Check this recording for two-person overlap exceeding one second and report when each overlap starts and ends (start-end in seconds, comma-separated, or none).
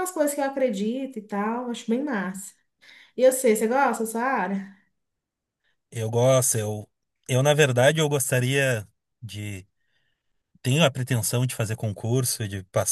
none